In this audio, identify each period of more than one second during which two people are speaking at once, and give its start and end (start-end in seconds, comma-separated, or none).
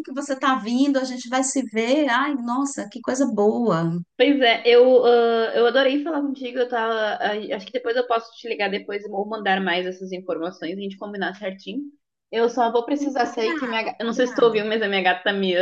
13.2-14.7